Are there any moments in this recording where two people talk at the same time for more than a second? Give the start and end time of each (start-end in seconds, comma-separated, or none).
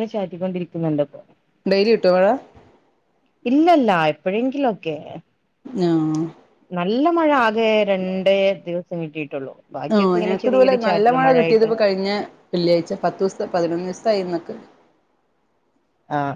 9.9-11.7